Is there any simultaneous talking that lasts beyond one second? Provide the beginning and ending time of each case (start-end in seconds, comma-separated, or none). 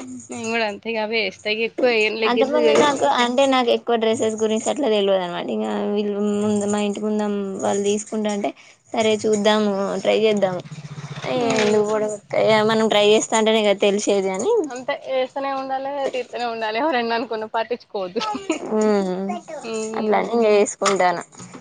none